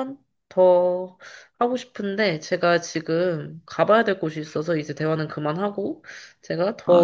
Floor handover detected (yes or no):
no